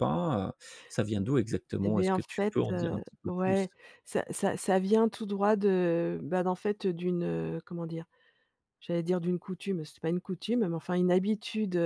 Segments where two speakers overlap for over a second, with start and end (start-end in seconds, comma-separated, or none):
1.8-3.7